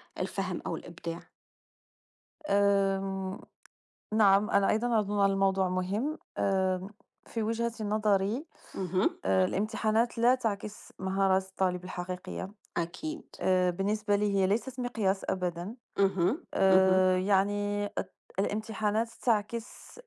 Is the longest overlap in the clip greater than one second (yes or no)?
no